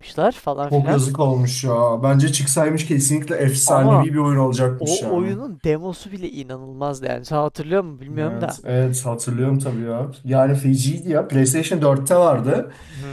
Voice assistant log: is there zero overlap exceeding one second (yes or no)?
yes